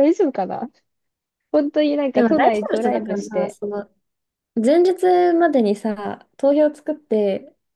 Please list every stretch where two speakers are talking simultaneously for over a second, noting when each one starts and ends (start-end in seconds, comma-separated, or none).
2.1-3.6